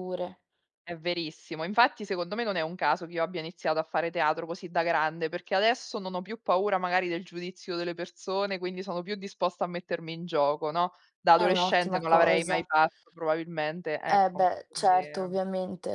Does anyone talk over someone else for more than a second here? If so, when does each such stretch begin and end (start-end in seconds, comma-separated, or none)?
11.3-12.6, 14.1-15.4